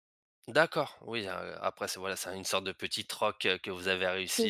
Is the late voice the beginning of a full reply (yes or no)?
yes